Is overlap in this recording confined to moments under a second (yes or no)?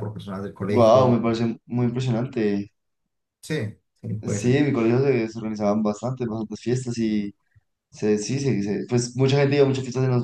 yes